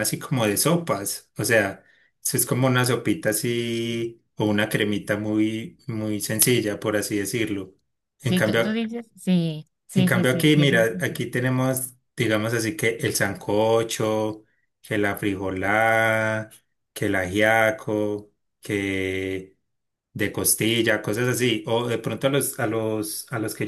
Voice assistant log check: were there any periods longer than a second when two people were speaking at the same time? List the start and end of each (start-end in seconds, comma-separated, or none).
9.9-11.2